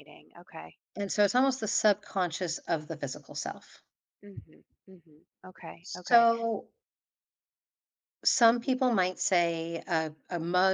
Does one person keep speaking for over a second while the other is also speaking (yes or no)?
no